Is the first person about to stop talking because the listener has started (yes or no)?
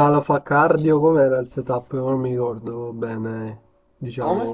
no